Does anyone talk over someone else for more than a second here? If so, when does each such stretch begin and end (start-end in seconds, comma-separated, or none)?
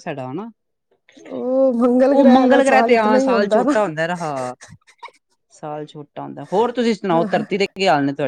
2.4-3.7